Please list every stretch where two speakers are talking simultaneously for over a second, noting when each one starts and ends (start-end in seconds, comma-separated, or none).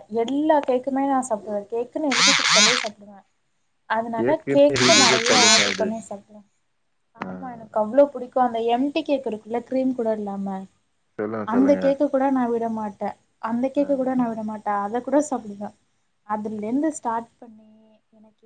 4.2-6.1